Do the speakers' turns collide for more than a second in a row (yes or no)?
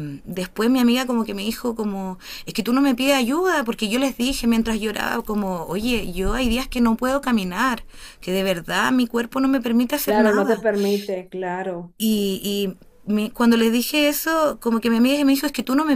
no